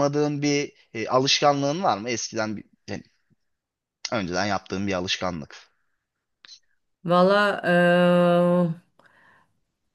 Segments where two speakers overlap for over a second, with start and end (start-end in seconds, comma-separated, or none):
none